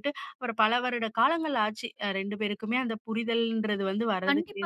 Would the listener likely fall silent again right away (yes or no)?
no